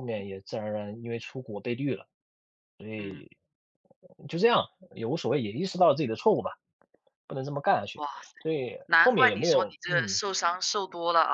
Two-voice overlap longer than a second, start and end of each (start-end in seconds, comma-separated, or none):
8.9-10.2